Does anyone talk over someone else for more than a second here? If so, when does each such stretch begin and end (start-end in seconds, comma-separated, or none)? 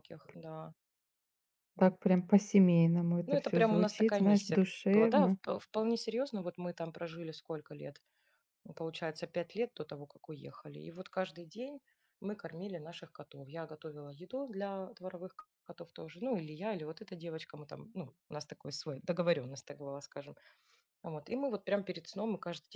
3.2-5.4